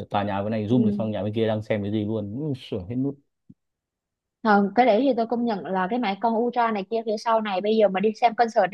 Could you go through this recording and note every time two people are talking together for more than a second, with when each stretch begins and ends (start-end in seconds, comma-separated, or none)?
none